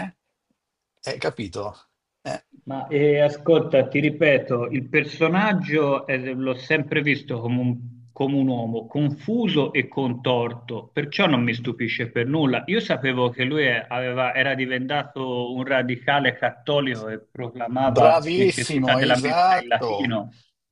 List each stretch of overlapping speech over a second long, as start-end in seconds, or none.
17.9-20.2